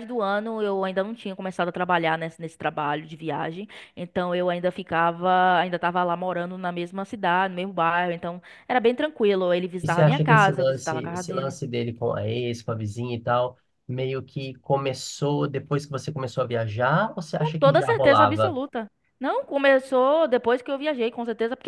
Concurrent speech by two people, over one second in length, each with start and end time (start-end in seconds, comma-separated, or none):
9.8-11.6, 17.3-18.6